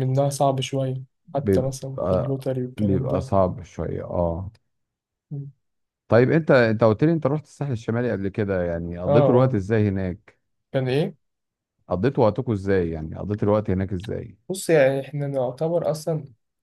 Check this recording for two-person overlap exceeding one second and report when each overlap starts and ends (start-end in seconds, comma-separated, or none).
1.3-3.3